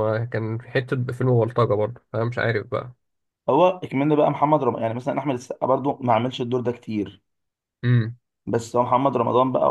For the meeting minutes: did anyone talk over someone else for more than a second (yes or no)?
no